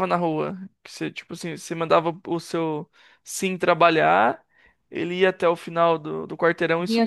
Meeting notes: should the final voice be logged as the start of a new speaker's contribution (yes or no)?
yes